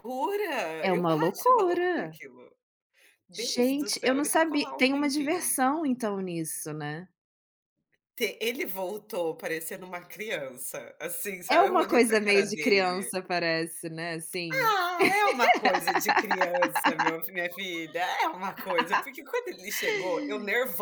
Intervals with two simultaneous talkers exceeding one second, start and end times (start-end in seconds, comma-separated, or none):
0.8-2.2, 3.3-5.6, 11.5-13.1